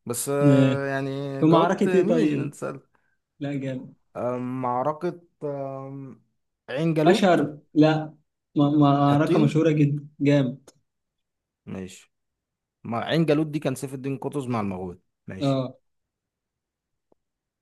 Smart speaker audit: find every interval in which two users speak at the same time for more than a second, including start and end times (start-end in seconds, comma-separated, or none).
1.4-2.6